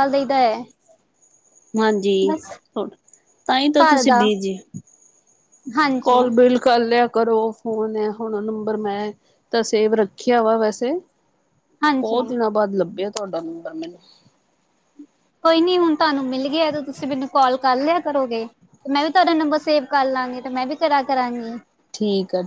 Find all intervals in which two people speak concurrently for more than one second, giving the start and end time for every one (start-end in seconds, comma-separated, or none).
none